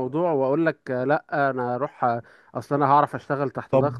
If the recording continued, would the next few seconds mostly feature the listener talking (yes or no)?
yes